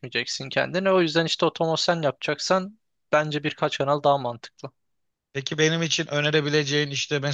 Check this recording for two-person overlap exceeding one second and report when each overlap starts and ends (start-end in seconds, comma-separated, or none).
none